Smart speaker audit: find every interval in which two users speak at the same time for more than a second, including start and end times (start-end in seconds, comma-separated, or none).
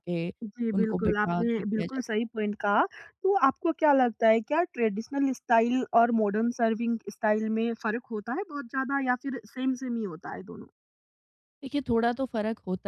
0.7-2.2